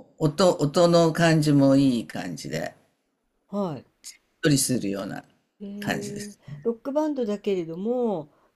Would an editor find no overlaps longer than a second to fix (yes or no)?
yes